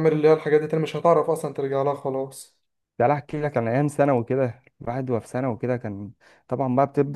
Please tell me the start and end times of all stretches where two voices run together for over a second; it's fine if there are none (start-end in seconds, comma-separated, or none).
none